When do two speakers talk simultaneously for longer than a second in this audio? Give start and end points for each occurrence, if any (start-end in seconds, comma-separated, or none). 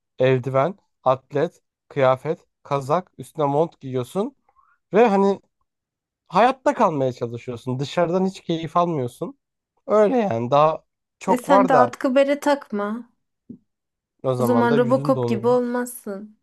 14.4-15.6